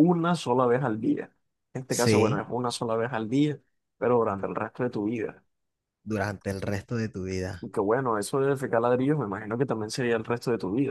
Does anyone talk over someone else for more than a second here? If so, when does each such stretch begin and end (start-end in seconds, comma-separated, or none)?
none